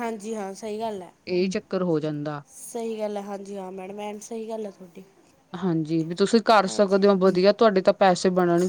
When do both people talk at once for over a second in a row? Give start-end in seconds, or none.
none